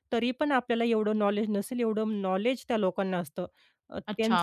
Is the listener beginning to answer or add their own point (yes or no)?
yes